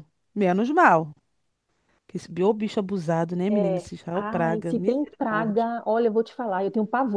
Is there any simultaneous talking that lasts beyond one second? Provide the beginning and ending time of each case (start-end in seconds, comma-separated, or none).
3.5-5.7